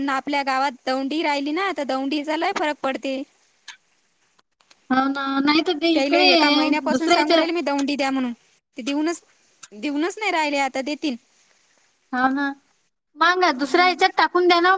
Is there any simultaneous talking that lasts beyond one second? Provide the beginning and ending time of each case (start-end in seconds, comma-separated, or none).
5.9-7.4